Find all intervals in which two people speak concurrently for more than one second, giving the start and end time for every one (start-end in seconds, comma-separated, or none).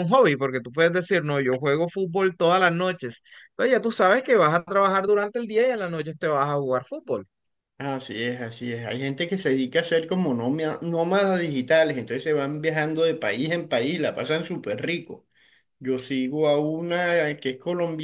none